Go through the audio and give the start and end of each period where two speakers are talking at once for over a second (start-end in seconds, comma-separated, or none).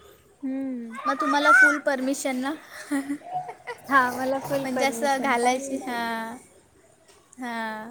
4.6-6.1